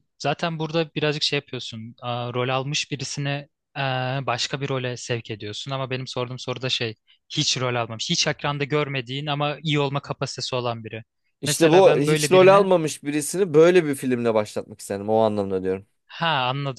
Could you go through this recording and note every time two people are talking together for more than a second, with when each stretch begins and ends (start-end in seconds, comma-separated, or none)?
11.4-12.7